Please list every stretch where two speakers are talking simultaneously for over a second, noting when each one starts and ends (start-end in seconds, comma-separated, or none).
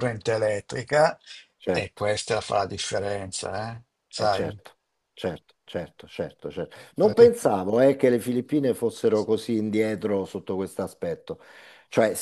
none